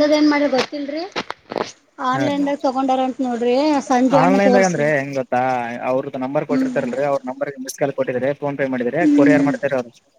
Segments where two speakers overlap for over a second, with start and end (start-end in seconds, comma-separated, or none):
none